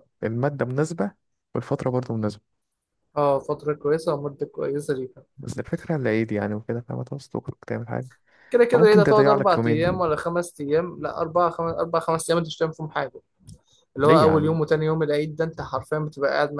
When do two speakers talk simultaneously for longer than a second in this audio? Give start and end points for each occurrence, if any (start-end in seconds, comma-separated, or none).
8.7-10.0